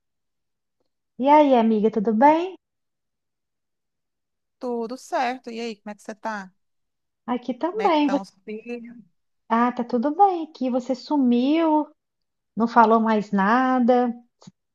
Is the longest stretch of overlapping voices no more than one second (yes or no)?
yes